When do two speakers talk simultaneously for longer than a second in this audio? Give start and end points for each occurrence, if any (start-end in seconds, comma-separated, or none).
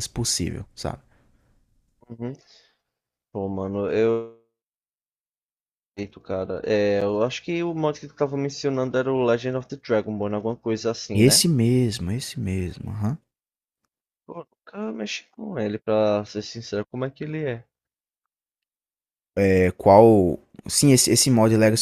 none